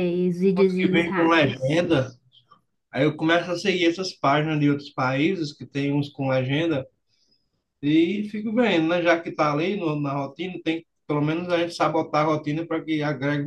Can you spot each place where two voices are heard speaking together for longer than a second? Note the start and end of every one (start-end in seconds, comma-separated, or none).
0.6-1.8